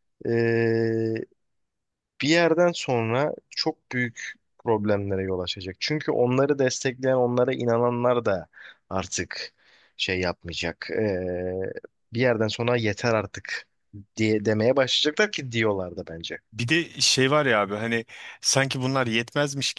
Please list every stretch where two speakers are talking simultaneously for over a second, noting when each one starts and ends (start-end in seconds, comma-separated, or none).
none